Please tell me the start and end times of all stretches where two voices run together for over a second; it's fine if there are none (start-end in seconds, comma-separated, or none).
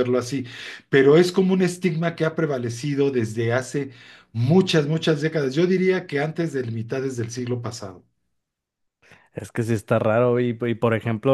none